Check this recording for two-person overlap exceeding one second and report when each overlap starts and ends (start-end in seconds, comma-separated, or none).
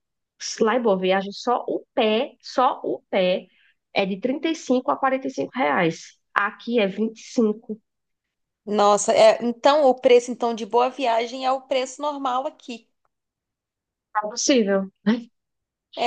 none